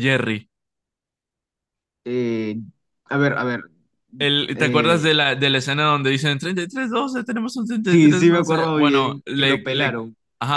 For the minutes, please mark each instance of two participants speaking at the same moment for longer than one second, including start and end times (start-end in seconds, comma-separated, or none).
7.8-10.0